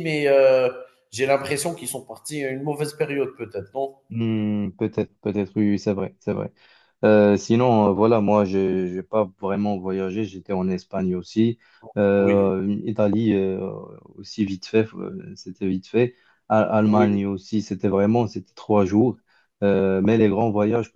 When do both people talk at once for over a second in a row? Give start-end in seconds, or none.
none